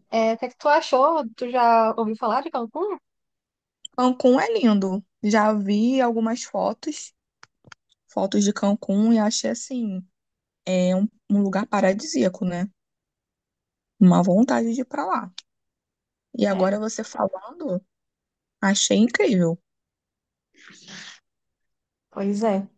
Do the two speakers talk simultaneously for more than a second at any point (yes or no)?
no